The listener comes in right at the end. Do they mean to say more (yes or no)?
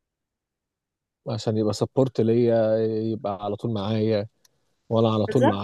no